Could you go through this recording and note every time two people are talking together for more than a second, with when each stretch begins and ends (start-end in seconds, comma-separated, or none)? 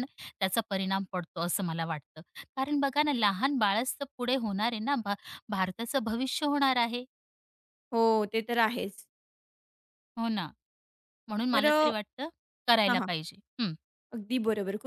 none